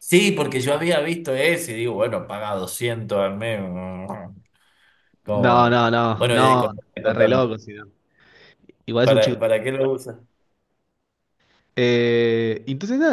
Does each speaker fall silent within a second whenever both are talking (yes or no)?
no